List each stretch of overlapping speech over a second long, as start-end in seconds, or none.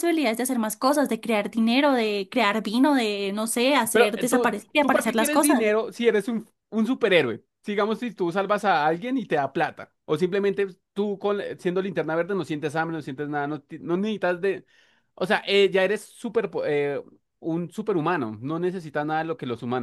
3.9-5.7